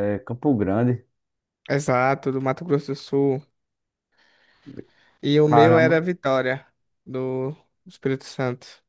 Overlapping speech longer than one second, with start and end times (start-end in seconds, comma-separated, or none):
none